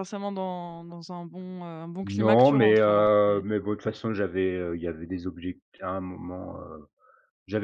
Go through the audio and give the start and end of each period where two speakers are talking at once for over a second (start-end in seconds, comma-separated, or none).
2.0-3.4